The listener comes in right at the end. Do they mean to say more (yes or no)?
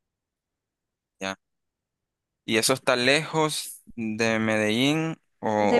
yes